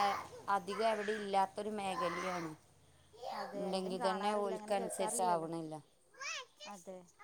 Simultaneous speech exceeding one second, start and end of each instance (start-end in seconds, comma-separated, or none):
3.6-5.5